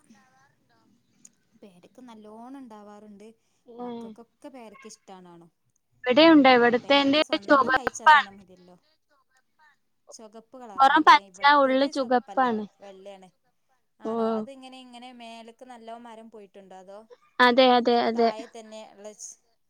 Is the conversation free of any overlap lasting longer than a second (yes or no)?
no